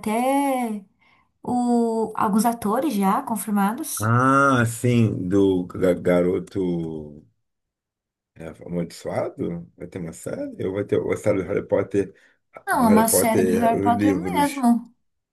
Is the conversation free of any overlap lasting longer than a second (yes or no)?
no